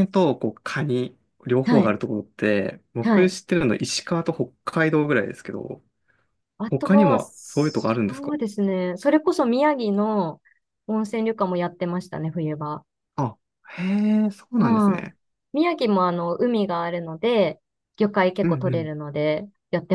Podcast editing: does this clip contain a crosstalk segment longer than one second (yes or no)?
yes